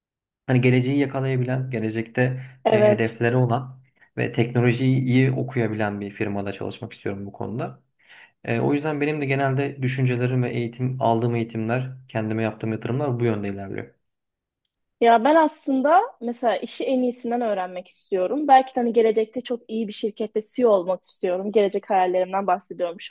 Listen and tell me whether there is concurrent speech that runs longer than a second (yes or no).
no